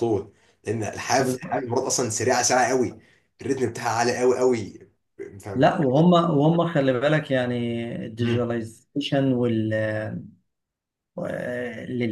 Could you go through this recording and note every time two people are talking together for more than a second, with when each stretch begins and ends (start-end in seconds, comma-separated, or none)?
none